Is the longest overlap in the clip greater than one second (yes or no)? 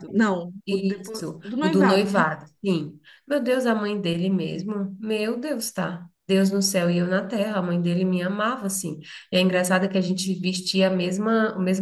yes